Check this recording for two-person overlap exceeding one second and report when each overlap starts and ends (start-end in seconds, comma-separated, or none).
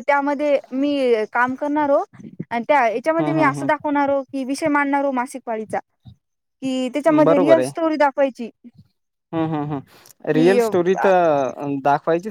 none